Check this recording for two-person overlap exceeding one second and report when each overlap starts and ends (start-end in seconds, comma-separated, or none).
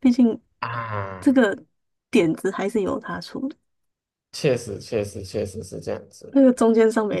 none